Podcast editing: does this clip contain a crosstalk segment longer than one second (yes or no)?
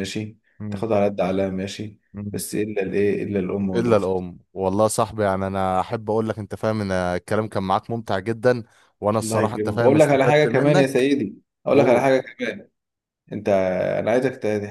yes